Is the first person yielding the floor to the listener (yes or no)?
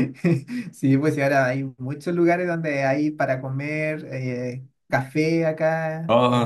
no